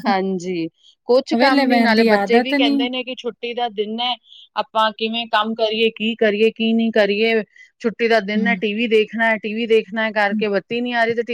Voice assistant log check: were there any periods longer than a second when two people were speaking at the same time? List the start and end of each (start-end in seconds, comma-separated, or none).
1.4-2.8